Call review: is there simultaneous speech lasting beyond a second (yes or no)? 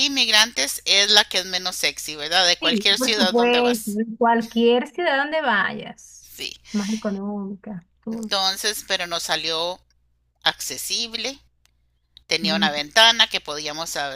yes